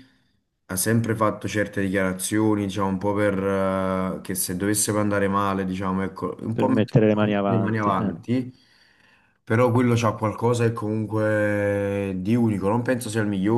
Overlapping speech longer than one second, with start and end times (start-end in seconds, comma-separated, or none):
6.5-8.1